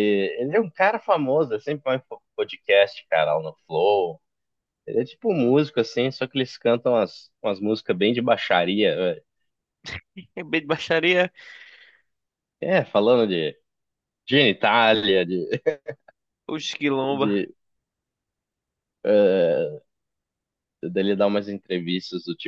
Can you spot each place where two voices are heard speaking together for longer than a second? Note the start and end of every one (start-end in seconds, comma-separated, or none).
none